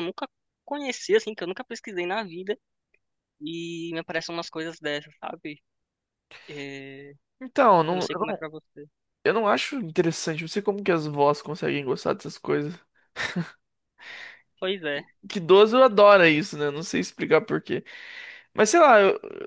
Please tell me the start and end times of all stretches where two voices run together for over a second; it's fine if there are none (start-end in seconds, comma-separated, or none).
none